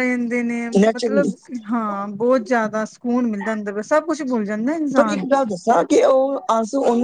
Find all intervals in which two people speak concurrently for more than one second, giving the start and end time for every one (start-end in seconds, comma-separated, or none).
none